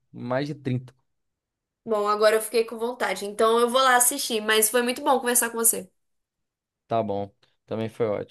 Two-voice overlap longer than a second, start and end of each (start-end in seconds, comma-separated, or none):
none